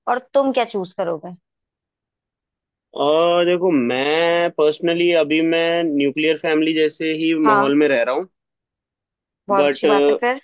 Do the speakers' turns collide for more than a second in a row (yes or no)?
no